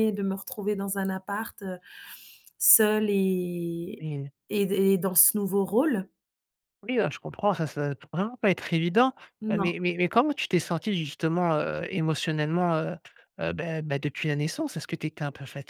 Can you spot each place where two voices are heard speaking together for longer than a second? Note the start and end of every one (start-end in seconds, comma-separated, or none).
none